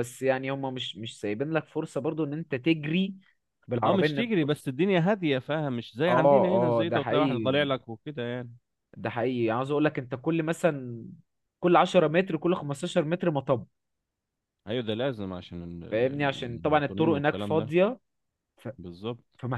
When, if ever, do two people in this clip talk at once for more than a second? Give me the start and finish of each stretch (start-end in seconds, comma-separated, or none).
6.1-7.8, 15.9-17.7